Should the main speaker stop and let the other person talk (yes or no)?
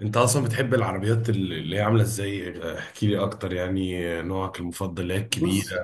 no